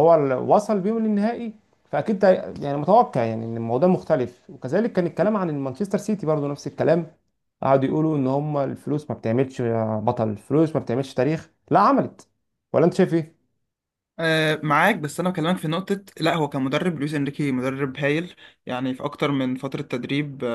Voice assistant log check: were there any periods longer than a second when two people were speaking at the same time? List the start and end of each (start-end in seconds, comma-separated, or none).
none